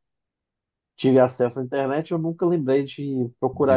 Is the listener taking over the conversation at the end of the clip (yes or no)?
yes